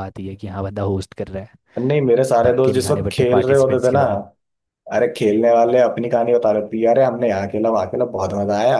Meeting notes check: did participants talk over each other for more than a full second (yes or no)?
yes